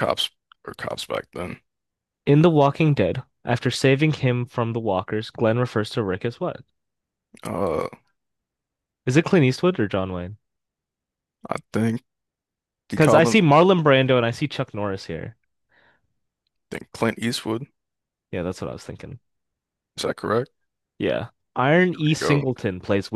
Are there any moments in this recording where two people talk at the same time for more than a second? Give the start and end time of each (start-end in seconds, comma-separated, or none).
none